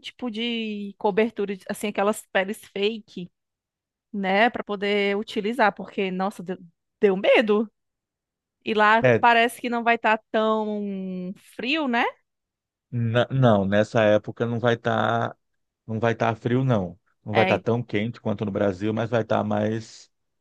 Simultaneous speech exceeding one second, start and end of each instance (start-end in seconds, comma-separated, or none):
none